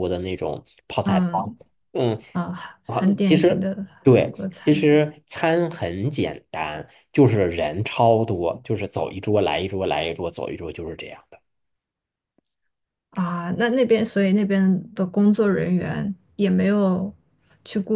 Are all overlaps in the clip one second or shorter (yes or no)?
no